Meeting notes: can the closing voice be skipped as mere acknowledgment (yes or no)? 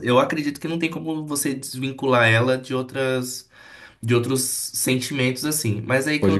yes